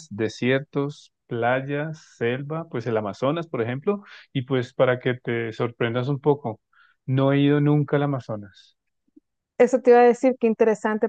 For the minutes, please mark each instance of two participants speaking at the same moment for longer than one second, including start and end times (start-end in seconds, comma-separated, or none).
none